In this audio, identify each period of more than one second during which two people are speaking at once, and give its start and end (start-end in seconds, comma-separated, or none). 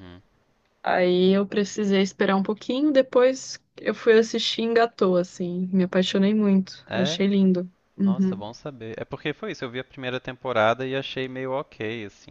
none